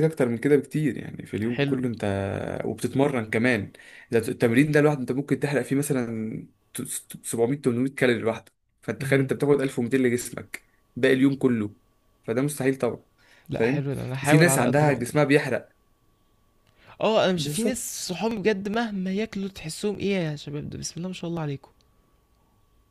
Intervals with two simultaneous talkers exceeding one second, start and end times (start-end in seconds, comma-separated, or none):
13.5-15.2